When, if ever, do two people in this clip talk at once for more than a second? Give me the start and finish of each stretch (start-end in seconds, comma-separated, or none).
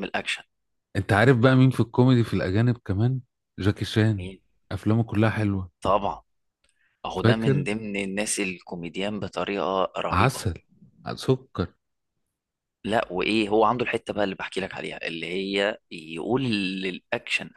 none